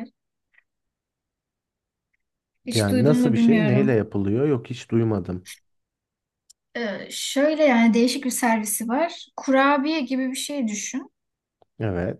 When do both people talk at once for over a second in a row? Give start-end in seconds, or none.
2.7-4.0